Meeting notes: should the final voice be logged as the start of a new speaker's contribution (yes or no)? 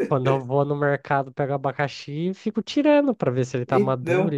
yes